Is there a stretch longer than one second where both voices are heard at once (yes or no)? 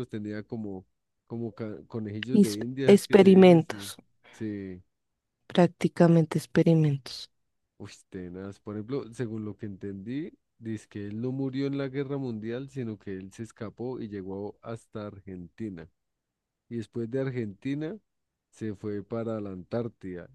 yes